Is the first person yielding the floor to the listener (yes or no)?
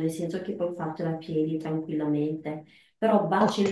no